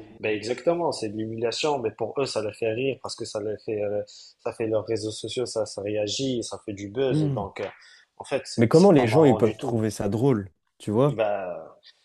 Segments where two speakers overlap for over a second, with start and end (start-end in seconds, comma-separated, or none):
8.6-9.8